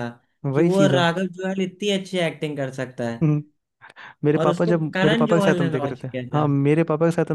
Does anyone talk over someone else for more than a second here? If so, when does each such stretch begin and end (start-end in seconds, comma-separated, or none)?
4.4-6.5